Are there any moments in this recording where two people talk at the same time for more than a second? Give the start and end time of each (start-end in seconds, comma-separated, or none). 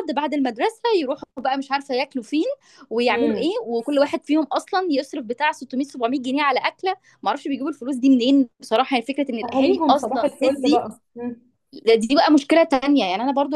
9.4-10.8